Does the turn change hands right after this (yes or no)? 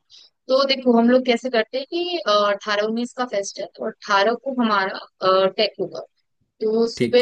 no